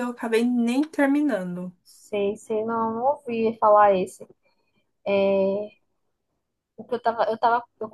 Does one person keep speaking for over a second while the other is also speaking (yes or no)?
no